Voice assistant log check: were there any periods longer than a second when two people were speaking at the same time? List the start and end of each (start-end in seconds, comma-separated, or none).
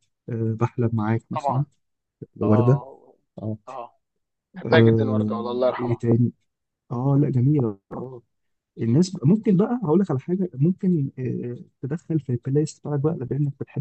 4.7-6.0